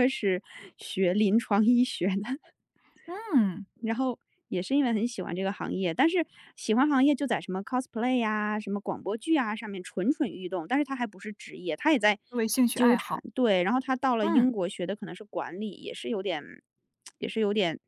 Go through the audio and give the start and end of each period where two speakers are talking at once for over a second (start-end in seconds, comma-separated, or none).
none